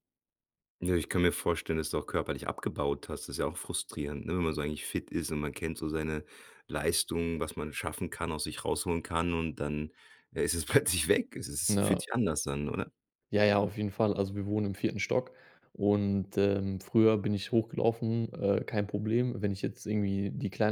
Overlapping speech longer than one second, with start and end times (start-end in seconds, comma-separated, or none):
none